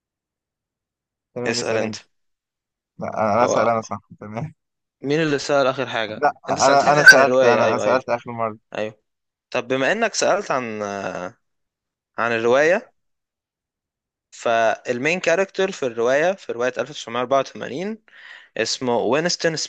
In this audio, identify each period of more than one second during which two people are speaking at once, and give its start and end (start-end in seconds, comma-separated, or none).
6.2-8.0